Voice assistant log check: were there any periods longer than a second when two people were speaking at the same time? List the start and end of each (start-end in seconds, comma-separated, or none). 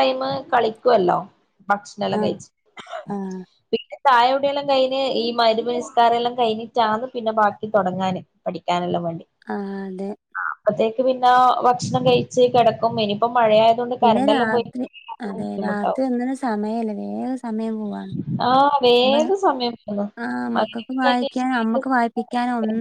20.5-21.8